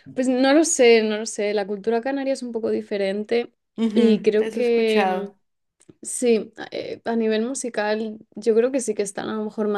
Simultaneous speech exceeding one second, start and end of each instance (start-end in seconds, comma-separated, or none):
3.9-5.3